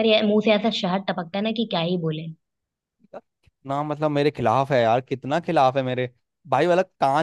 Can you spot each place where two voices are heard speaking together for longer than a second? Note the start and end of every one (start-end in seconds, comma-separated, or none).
none